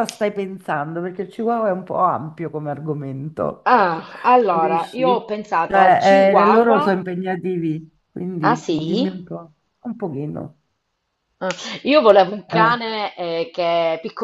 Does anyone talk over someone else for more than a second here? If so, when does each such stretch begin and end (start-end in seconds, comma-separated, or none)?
4.5-7.0